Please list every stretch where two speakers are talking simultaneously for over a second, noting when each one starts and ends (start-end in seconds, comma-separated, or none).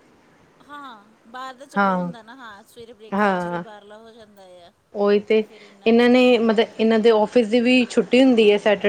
none